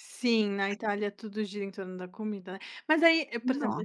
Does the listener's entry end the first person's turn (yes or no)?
no